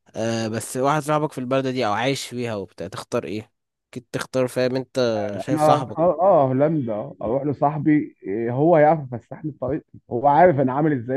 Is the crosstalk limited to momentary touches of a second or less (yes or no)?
yes